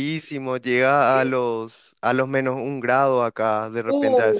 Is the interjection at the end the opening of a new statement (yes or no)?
yes